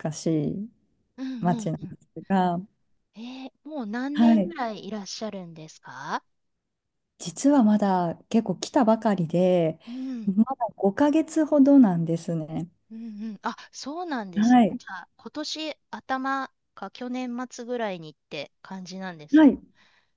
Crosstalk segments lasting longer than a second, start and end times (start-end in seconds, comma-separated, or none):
none